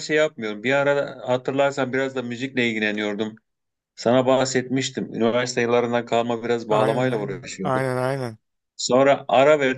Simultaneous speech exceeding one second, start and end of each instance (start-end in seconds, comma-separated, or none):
6.7-7.9